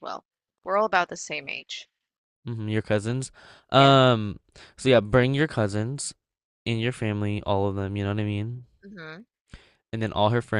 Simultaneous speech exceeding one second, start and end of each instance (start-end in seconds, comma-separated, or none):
none